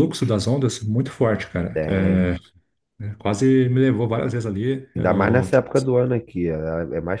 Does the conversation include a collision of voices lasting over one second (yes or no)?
no